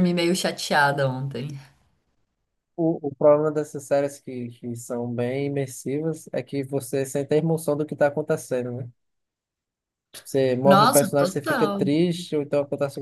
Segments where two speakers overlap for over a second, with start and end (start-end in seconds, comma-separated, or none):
10.6-11.9